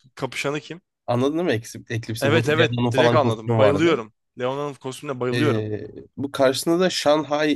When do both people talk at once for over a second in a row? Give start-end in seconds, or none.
2.2-3.9